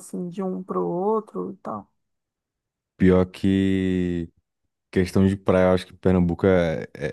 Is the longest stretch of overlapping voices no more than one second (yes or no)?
yes